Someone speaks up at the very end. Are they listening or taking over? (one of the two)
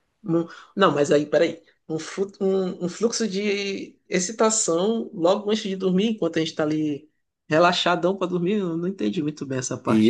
taking over